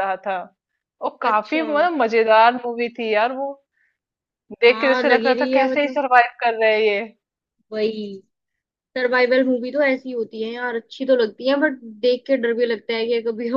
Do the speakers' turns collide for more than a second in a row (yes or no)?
yes